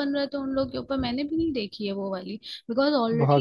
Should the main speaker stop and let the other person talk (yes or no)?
no